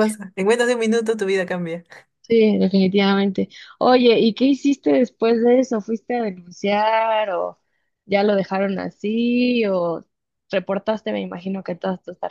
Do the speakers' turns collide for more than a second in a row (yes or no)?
no